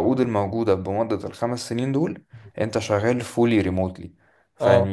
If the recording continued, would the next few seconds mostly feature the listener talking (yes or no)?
no